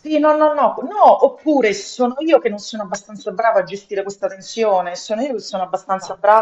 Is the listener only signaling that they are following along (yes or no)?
yes